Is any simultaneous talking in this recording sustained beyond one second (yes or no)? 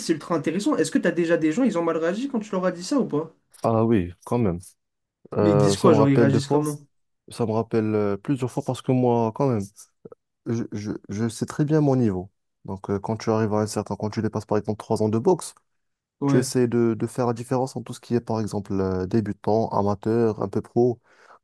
yes